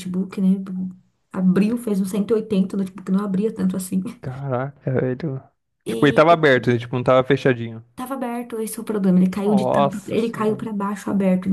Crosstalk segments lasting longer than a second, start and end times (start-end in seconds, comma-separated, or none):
9.4-10.7